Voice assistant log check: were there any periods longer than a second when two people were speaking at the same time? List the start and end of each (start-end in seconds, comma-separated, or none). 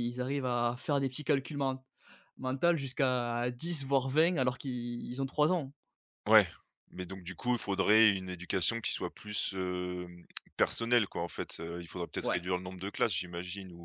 none